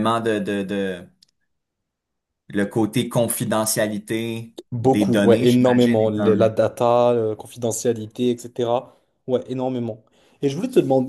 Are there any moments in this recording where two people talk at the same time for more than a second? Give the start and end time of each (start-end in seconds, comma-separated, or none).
4.7-6.4